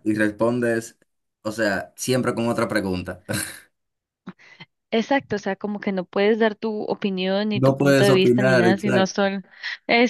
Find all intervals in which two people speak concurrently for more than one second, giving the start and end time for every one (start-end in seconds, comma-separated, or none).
7.5-9.3